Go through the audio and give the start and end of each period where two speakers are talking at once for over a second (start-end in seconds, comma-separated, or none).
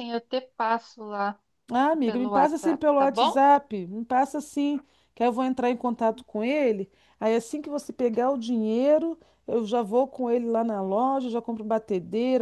2.0-3.4